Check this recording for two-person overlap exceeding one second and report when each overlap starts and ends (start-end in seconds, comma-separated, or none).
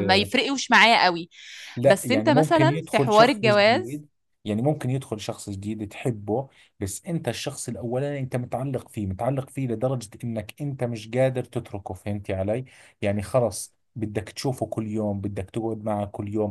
1.9-4.0